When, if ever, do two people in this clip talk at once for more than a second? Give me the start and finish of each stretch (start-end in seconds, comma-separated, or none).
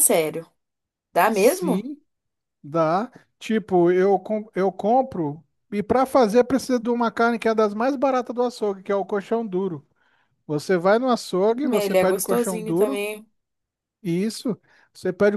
11.5-13.0